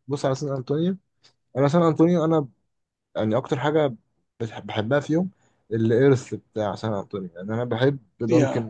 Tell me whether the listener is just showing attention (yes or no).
yes